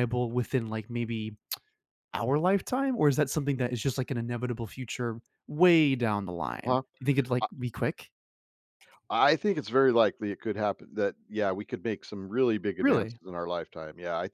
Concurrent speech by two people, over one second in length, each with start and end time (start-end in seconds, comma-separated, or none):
none